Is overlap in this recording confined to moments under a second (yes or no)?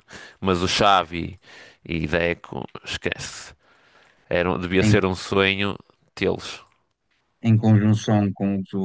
yes